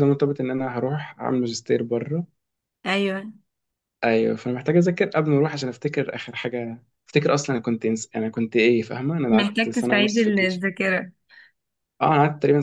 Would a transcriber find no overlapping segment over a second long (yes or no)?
no